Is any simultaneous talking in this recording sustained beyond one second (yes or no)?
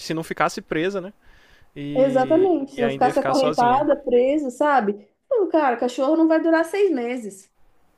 yes